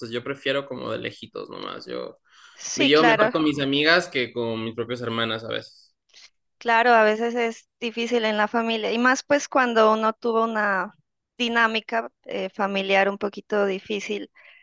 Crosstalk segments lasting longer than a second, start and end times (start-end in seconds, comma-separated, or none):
none